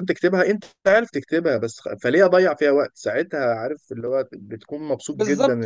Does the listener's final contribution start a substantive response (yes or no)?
yes